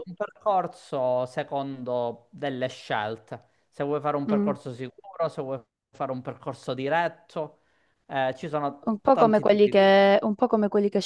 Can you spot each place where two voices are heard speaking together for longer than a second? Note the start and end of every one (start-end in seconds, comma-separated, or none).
8.9-10.2